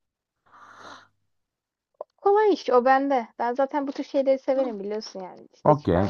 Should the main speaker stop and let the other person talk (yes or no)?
yes